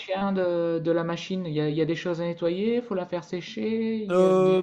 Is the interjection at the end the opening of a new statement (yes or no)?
yes